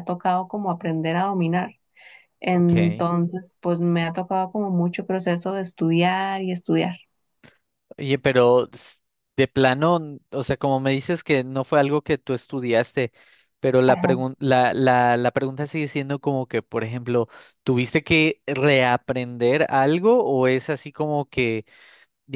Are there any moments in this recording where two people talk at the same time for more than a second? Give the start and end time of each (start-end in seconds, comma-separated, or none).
none